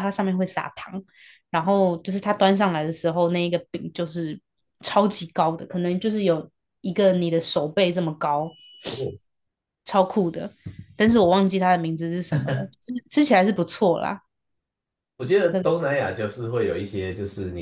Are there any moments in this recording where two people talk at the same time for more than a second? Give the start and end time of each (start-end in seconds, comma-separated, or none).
none